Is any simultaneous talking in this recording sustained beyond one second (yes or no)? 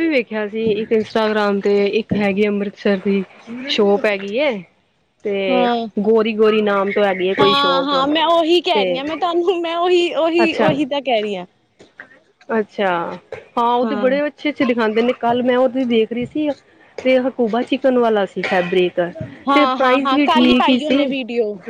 yes